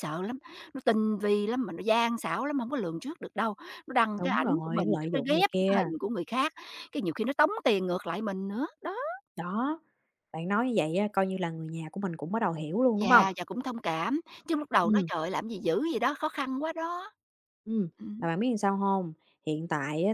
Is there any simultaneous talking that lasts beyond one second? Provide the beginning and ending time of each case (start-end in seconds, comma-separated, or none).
4.2-5.8